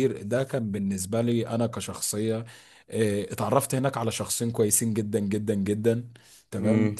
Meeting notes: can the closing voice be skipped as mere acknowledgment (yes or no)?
yes